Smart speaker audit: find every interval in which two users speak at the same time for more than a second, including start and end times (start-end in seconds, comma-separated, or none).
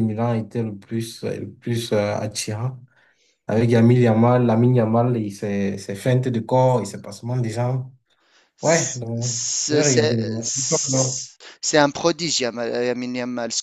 8.6-10.2